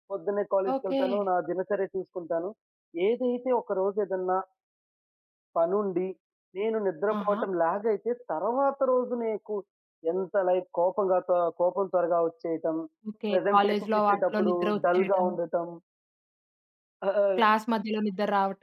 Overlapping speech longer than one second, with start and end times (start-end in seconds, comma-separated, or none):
13.3-15.3